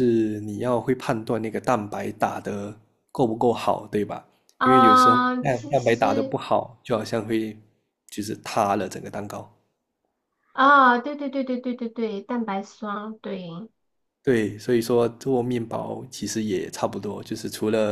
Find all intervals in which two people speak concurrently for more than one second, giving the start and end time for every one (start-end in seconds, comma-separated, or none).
4.6-6.4